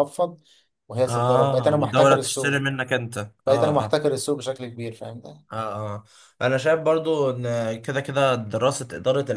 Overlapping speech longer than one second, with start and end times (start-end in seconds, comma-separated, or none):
1.1-2.7